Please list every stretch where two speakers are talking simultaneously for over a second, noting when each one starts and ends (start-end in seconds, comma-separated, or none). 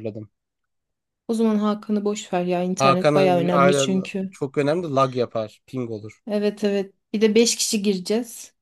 2.8-4.4